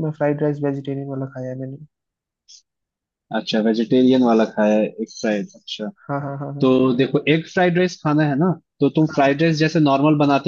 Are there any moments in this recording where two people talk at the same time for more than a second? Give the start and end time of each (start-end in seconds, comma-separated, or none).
none